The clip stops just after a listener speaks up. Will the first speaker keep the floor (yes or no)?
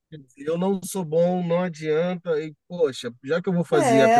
no